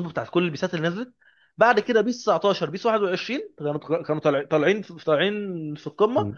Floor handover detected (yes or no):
yes